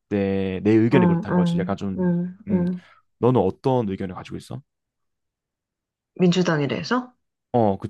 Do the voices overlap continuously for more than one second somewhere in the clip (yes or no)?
yes